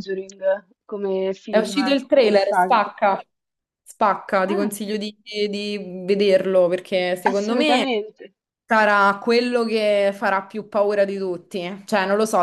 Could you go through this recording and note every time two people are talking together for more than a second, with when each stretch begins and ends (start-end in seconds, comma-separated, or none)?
1.5-2.8